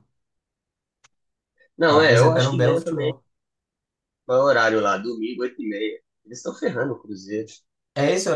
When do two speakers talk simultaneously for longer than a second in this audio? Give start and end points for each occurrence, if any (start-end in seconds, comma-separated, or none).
1.9-3.1